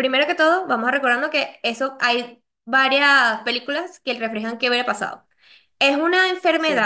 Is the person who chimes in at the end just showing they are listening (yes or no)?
yes